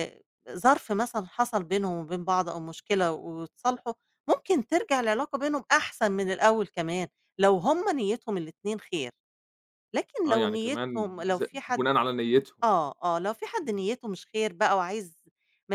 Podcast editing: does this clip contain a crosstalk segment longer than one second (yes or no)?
yes